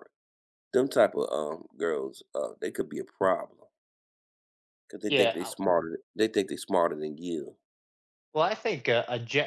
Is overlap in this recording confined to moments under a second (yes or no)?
yes